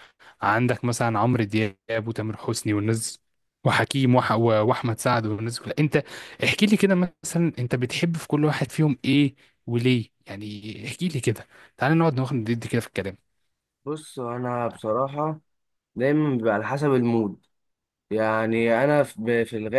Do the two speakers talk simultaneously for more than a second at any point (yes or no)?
no